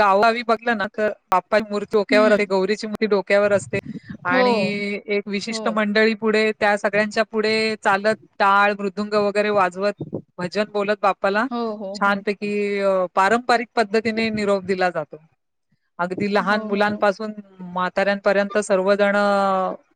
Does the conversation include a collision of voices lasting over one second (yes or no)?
no